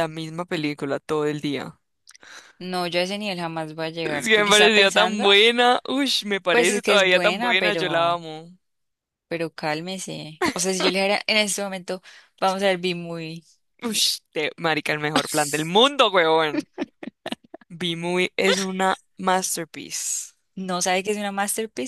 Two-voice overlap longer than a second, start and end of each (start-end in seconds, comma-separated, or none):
4.0-5.3, 6.5-8.2